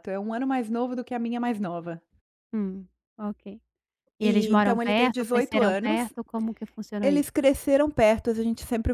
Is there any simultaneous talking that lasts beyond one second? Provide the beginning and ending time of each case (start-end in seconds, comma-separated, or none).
4.2-6.1